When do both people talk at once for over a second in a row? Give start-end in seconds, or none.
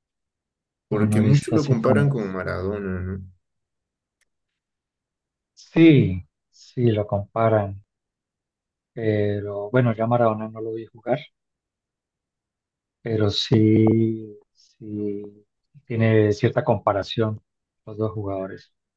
0.9-2.4